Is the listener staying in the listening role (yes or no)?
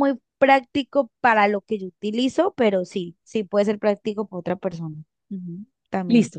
no